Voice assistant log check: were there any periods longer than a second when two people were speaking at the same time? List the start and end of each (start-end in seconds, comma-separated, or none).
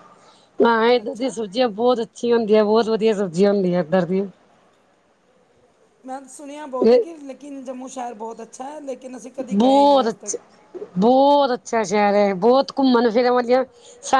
none